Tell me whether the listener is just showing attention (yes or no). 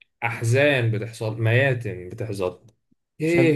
yes